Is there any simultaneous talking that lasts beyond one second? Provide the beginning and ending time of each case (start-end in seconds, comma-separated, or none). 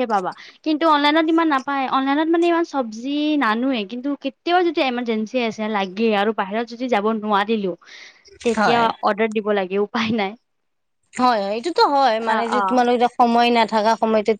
none